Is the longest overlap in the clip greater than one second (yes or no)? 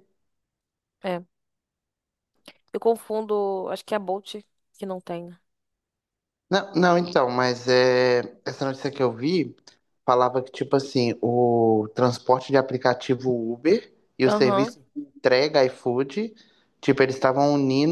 no